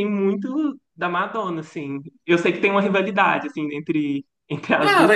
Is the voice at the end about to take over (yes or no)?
yes